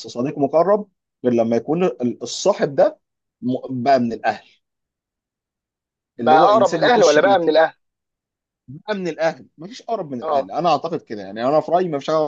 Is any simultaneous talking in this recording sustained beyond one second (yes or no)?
yes